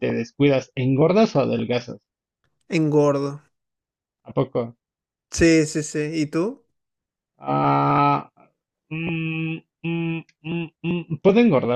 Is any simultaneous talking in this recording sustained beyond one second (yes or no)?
no